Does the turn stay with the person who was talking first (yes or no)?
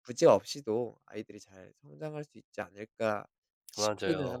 no